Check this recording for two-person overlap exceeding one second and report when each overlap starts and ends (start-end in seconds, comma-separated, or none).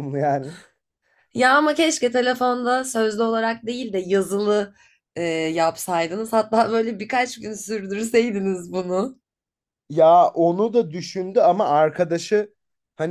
none